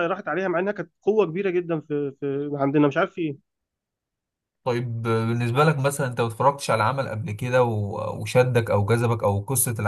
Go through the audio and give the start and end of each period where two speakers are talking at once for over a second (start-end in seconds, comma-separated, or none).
none